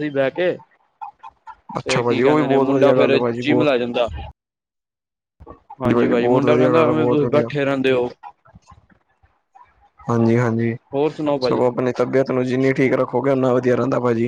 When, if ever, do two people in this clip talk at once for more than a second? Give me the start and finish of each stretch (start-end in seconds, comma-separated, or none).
1.8-3.7, 5.9-7.5